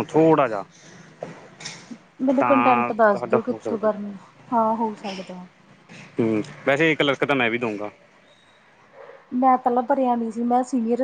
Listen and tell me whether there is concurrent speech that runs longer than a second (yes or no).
yes